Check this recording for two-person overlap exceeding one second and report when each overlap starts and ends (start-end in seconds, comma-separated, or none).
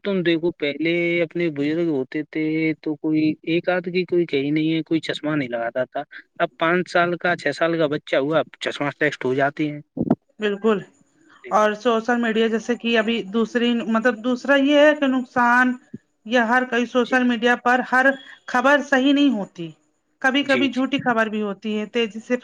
none